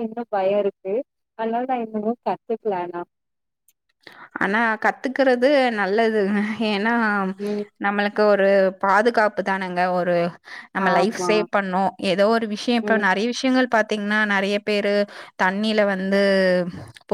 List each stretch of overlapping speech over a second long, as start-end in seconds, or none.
none